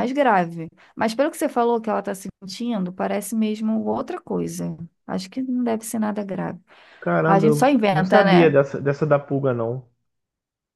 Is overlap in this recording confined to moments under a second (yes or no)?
no